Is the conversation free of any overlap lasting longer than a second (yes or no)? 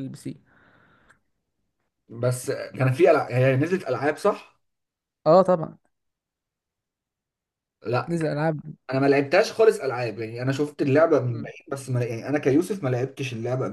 yes